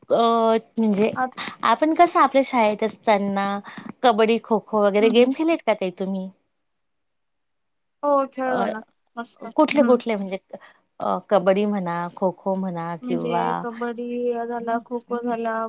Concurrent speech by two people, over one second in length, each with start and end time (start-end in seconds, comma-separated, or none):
none